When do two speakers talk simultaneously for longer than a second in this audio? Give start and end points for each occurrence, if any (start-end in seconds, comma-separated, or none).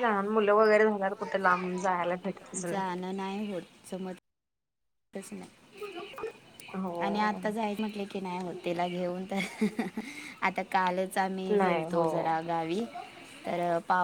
none